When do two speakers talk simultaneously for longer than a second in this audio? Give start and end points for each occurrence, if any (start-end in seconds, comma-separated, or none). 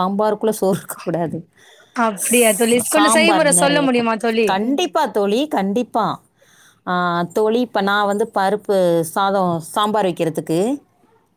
2.2-4.2